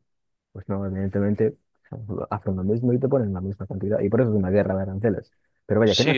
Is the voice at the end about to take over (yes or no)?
yes